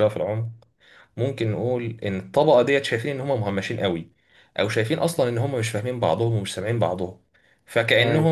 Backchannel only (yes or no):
yes